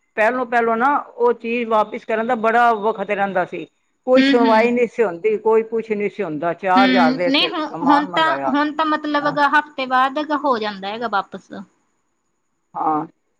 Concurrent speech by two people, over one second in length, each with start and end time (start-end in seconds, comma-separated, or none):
6.8-8.5